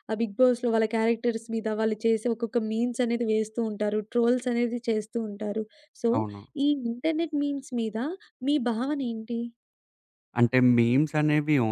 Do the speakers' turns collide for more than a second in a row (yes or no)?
no